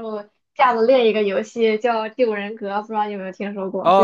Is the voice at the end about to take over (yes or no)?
yes